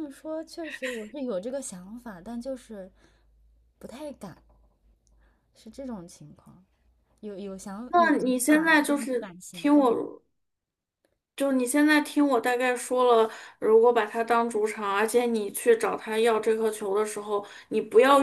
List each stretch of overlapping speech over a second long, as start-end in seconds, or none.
7.9-10.0